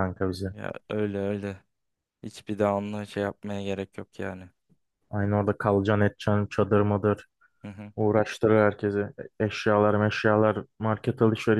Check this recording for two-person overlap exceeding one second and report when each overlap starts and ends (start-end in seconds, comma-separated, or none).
none